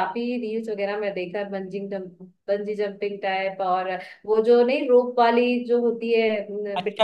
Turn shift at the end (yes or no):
yes